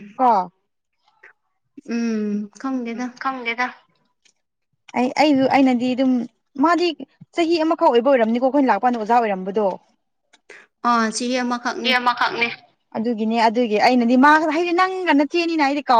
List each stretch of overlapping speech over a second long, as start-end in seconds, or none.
none